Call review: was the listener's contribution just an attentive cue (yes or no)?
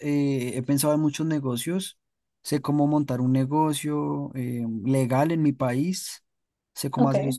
yes